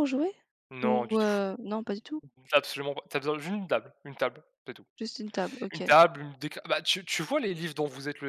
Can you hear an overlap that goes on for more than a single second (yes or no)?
no